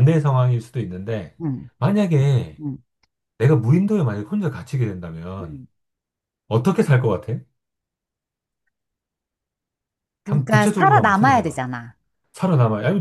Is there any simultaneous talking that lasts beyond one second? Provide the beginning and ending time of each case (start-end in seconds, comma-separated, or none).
10.2-11.6